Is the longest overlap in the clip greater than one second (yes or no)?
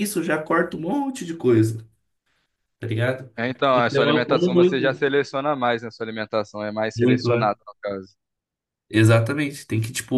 yes